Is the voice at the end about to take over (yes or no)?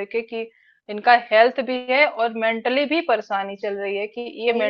no